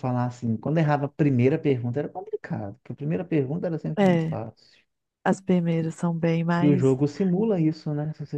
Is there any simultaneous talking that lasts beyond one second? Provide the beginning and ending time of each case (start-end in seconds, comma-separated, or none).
none